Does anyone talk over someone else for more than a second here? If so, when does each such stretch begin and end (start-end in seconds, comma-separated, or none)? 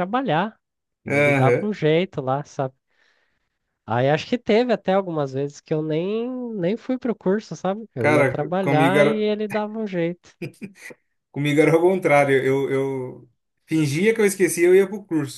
8.0-9.3